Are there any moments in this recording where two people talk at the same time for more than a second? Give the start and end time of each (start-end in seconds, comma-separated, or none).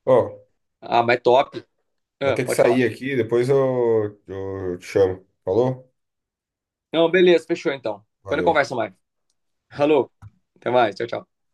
none